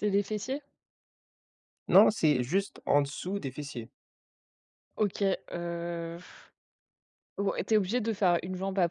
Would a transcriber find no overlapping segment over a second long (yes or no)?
yes